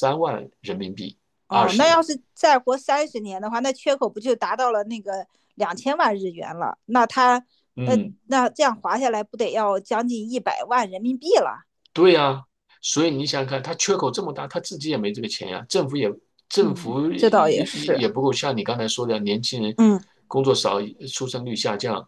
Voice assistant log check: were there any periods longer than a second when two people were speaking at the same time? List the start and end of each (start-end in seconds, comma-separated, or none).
16.6-18.0